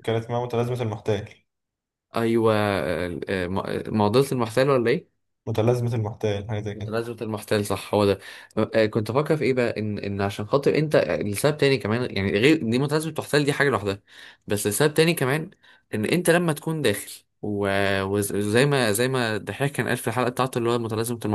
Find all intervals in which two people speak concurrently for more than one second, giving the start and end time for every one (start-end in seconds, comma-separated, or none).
none